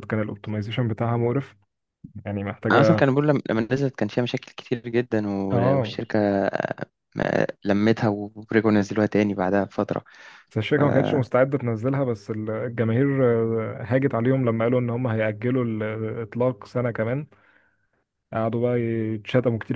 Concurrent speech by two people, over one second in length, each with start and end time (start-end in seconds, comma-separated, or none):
none